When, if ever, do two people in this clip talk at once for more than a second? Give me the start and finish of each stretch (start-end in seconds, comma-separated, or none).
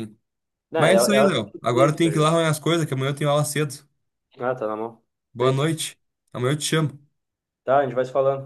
0.8-2.3